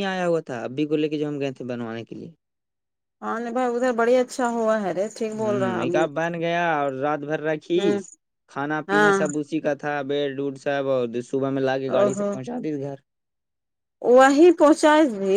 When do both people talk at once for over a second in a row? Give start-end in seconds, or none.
none